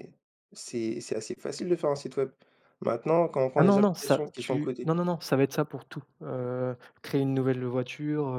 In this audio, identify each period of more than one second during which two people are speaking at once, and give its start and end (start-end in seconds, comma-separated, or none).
3.6-4.9